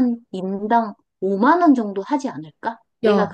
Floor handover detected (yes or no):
yes